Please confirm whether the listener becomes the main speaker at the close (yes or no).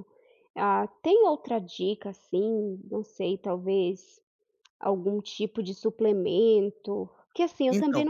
no